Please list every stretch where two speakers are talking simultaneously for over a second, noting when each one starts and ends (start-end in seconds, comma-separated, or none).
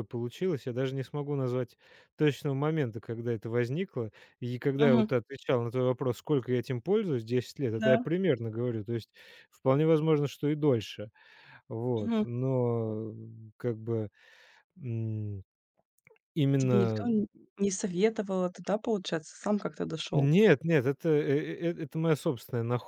none